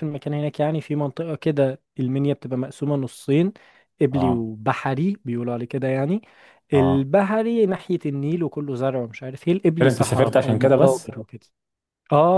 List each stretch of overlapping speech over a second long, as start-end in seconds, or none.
9.8-11.1